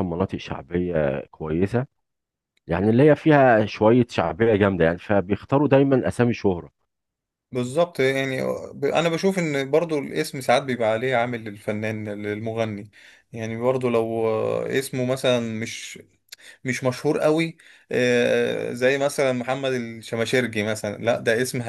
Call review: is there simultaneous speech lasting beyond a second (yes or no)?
no